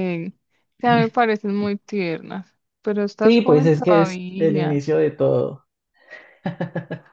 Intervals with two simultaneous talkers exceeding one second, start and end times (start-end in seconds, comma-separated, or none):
3.2-4.8